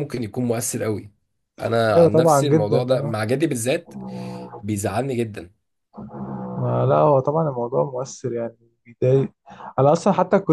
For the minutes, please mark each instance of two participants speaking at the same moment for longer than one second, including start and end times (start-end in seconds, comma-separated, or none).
1.9-3.2